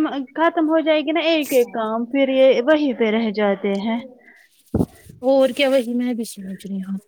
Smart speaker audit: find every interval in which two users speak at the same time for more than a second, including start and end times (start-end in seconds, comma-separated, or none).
none